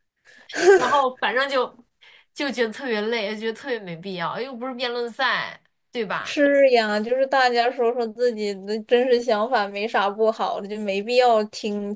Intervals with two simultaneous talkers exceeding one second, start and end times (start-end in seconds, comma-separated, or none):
none